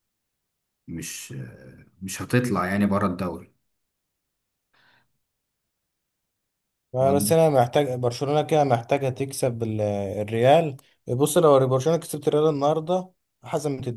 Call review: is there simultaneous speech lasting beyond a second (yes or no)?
no